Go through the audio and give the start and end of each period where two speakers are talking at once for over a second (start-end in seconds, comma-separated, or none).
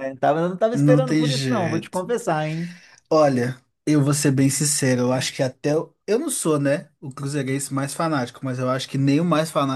0.7-2.0